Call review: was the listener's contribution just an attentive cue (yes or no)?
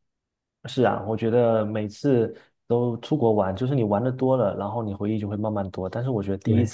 yes